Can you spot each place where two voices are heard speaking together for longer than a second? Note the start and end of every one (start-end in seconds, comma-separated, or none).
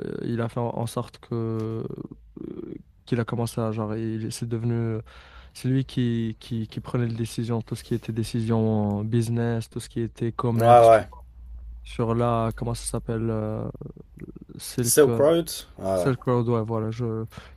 none